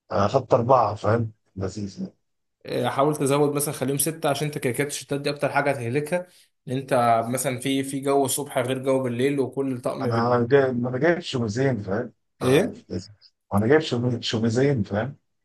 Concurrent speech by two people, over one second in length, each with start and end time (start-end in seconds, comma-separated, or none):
none